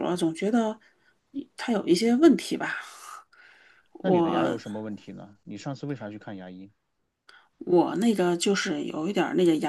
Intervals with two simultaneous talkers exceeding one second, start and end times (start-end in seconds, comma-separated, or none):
none